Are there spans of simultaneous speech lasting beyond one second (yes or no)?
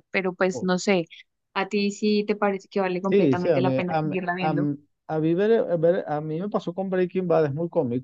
yes